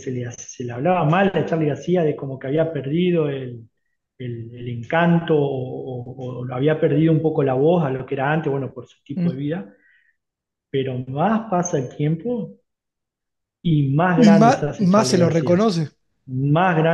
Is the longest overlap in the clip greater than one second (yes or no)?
yes